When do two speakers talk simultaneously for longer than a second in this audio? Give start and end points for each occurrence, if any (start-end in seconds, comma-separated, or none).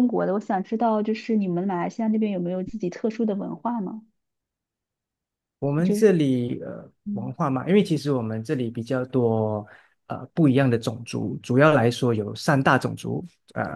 none